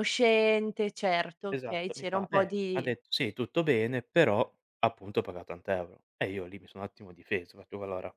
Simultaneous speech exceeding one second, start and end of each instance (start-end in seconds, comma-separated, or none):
1.5-2.9